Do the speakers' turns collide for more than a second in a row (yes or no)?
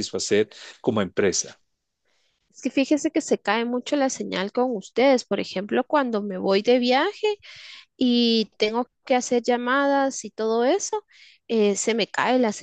no